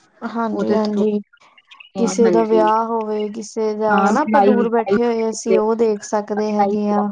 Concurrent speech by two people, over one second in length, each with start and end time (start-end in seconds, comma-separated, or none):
3.9-5.8